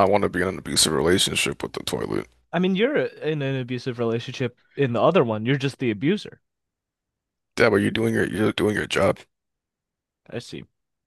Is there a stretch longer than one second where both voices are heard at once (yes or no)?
no